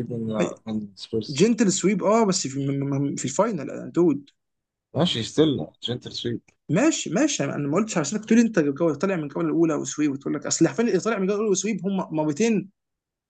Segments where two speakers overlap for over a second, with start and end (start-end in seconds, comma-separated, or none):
none